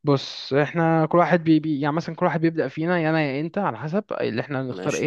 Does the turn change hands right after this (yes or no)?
no